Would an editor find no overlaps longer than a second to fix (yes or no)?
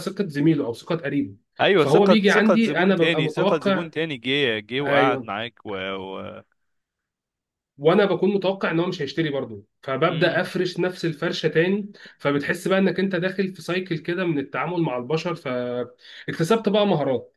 no